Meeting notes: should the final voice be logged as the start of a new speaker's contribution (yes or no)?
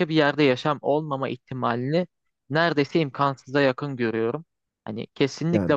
no